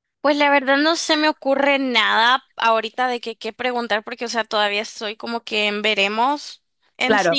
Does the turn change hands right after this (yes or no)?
no